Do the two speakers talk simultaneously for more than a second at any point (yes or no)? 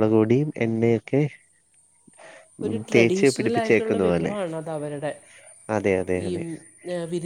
yes